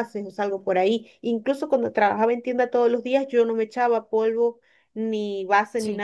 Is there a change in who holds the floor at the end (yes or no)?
no